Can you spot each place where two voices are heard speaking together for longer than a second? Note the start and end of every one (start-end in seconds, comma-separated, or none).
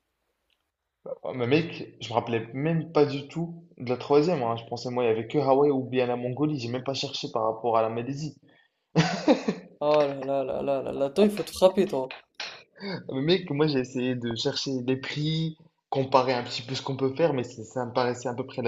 none